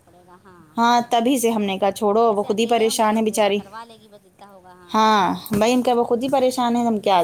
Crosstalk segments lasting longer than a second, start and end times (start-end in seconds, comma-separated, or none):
2.3-3.6